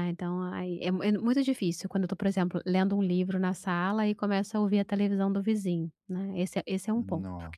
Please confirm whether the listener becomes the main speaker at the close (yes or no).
no